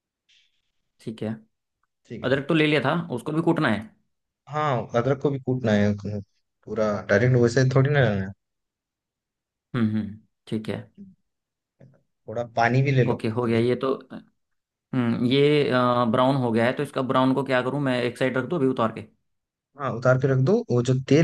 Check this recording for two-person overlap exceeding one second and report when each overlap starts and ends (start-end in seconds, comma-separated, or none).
none